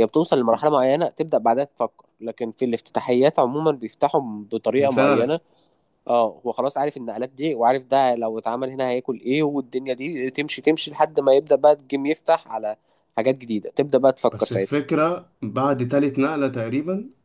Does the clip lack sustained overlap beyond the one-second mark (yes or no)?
yes